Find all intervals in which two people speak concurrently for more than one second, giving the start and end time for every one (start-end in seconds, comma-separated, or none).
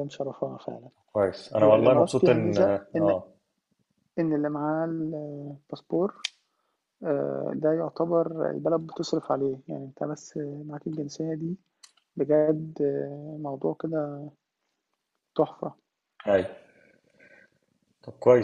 1.5-3.1